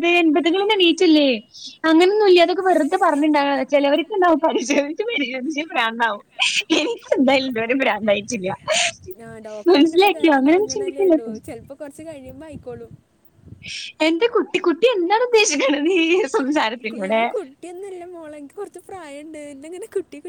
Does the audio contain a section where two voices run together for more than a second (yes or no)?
no